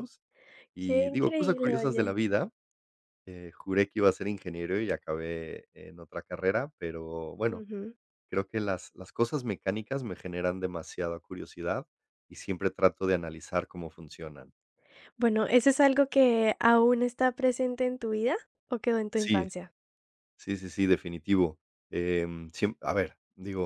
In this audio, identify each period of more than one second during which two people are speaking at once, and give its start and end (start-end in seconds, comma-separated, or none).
0.8-2.2